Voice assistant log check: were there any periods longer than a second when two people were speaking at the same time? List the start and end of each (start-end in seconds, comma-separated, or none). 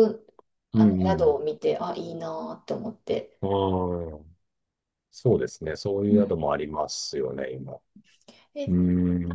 none